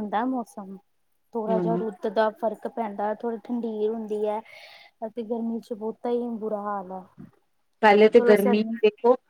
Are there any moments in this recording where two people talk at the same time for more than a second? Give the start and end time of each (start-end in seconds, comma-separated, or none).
none